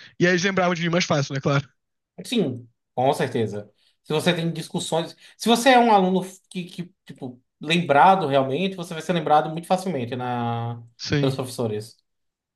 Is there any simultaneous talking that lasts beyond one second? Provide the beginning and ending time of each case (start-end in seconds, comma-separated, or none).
none